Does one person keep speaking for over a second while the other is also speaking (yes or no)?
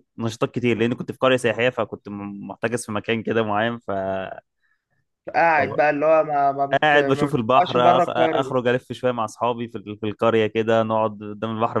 yes